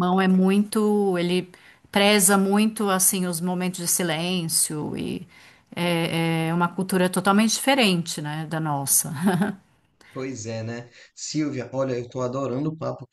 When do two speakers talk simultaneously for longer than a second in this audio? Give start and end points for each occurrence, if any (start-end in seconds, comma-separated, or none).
none